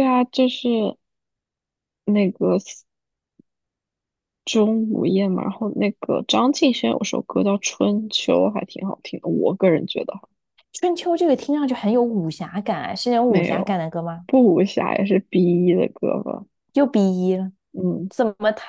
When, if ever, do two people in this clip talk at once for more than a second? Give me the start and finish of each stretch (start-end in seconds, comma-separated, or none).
none